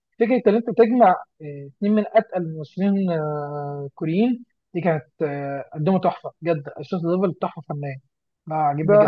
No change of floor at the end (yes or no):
no